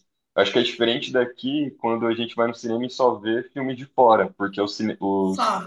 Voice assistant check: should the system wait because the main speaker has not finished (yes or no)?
yes